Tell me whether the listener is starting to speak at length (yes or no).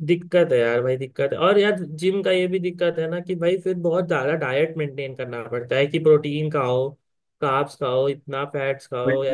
yes